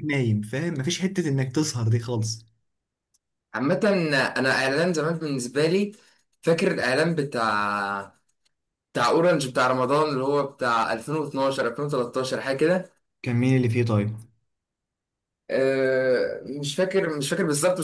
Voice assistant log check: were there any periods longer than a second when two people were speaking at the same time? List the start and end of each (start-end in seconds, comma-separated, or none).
none